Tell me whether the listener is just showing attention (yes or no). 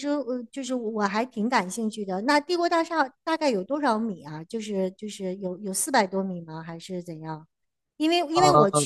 yes